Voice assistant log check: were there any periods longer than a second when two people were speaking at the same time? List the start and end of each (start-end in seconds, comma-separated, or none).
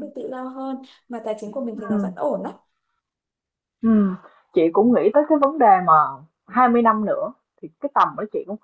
none